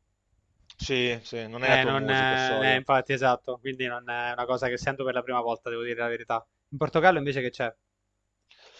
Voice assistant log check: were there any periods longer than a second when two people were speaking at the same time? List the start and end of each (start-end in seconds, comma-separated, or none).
1.6-2.8